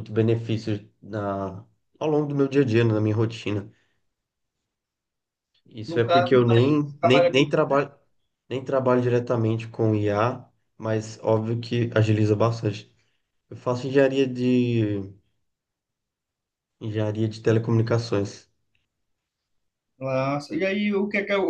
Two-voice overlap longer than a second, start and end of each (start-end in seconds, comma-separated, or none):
5.9-7.5